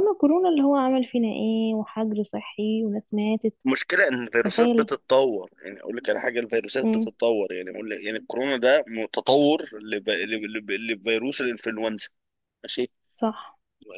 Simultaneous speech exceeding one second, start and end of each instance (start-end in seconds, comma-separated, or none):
none